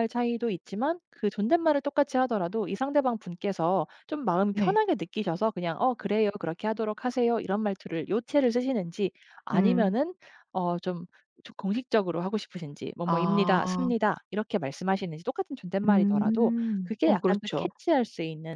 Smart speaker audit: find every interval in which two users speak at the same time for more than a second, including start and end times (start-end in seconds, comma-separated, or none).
15.9-17.7